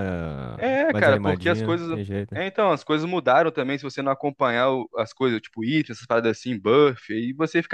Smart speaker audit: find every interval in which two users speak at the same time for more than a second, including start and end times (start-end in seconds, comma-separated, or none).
0.6-2.4